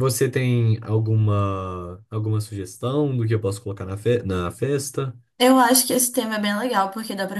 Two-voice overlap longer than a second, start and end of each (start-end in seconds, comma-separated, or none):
none